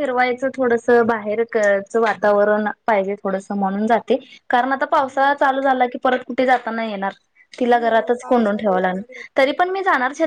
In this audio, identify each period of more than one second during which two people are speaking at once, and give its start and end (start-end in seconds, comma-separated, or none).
7.8-9.7